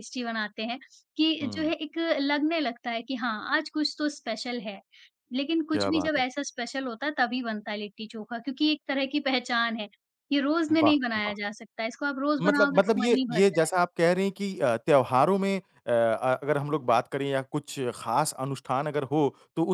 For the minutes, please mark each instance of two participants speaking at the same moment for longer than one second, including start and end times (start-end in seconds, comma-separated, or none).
12.4-13.8